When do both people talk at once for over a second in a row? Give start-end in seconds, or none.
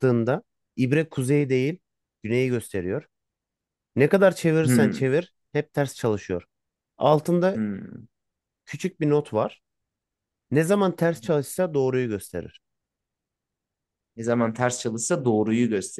none